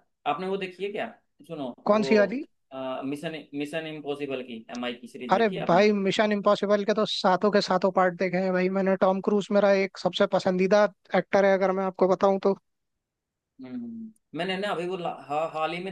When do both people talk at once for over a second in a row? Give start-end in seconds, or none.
none